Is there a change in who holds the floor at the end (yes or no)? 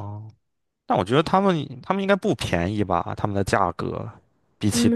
yes